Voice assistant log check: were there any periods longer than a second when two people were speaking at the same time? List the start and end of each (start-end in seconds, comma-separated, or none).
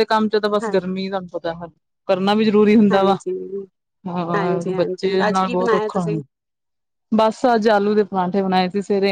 4.3-6.0